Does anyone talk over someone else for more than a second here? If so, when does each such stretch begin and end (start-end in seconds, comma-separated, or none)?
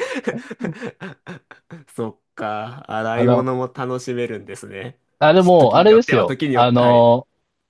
5.6-7.1